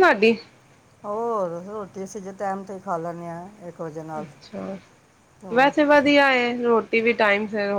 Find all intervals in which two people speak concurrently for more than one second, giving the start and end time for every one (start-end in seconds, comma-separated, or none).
none